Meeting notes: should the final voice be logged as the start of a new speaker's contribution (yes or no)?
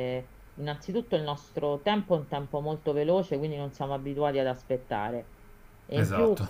no